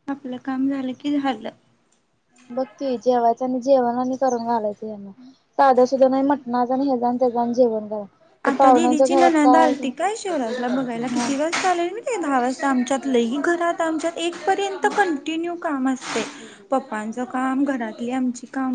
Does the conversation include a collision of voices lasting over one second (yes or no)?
yes